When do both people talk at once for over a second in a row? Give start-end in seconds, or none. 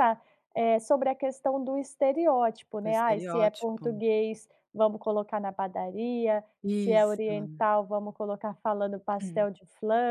2.8-4.0